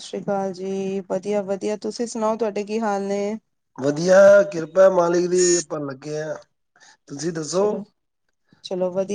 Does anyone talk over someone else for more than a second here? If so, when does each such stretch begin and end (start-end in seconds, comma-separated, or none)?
none